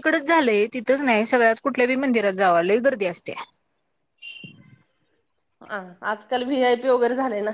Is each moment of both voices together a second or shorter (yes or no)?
yes